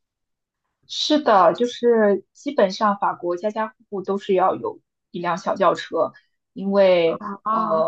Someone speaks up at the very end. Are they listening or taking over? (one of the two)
listening